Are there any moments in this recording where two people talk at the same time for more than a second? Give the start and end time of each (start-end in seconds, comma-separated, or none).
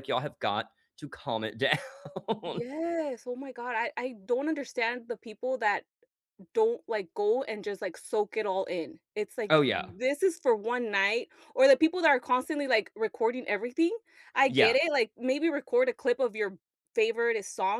none